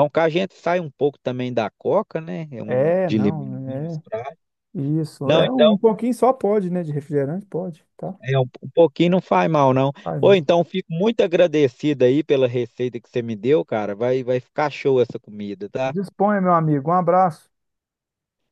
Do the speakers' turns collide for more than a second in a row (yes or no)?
yes